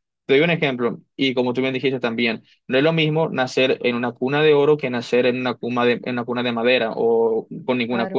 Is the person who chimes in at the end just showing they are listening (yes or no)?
yes